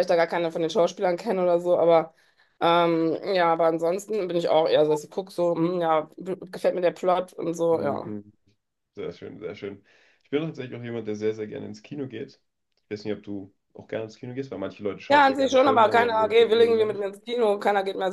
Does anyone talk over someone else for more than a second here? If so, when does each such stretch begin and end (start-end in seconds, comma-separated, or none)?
15.1-17.1